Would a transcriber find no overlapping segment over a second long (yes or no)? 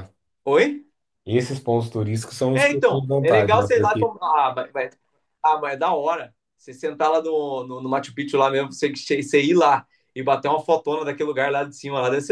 no